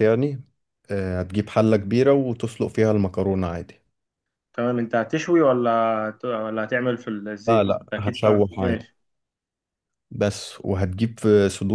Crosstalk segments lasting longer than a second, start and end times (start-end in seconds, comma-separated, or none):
7.5-8.9